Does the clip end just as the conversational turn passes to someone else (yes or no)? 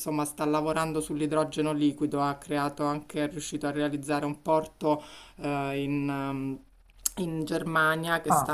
no